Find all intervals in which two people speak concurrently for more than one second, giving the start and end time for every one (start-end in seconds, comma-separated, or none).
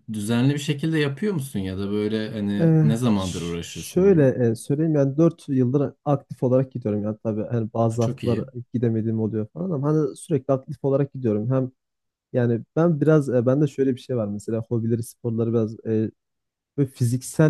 2.6-4.3